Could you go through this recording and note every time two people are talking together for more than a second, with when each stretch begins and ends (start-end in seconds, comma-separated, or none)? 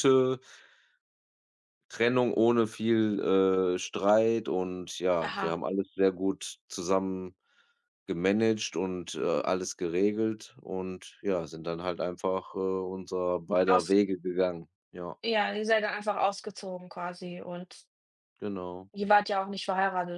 none